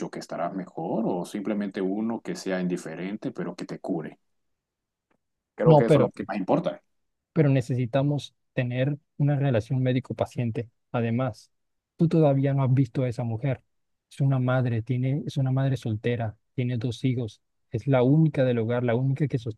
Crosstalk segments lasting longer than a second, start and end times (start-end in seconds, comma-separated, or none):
none